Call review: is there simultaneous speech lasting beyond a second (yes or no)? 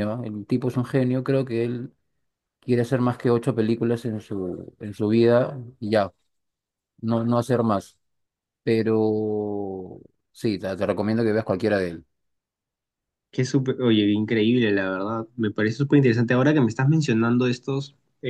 no